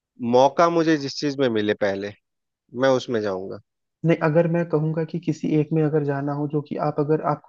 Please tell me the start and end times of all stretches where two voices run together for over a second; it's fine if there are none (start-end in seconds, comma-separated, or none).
none